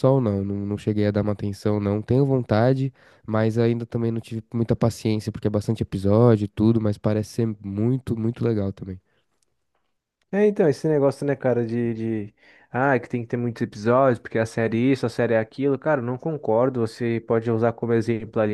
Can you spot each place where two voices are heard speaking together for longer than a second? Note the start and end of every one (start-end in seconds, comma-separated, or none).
none